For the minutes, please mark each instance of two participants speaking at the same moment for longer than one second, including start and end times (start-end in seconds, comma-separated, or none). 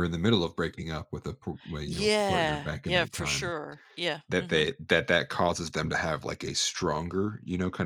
1.9-3.5